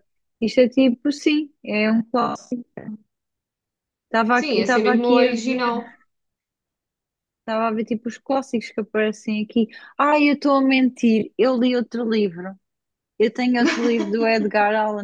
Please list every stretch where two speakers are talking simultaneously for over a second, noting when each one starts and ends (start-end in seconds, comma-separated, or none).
4.3-5.7